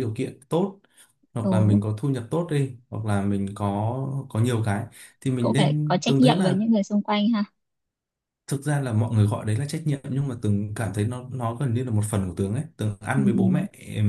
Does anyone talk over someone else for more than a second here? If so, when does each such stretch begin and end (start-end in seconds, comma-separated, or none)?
5.4-6.6